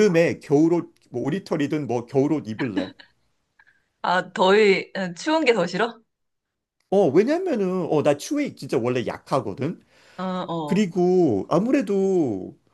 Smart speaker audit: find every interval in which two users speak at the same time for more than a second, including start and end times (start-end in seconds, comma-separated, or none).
none